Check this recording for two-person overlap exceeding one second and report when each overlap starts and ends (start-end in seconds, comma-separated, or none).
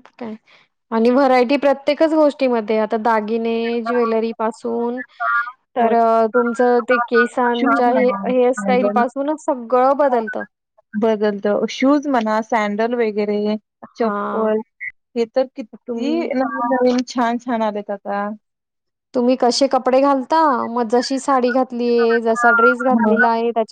7.6-9.0